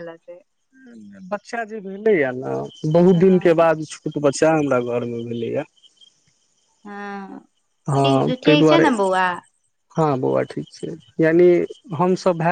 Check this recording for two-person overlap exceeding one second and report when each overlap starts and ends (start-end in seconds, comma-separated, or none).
none